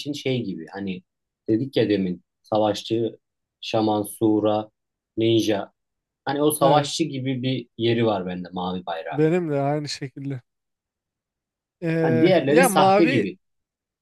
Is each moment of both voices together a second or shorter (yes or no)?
no